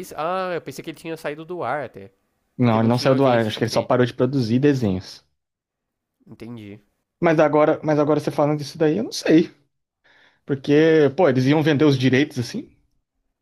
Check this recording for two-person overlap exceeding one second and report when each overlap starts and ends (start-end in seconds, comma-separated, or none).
2.6-4.0